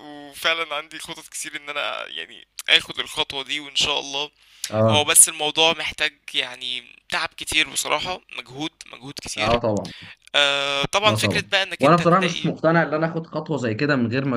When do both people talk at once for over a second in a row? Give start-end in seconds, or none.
11.0-12.5